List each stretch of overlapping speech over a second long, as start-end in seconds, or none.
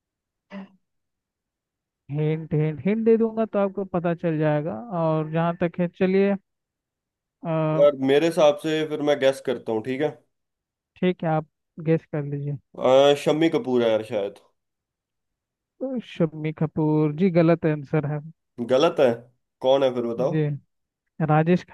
none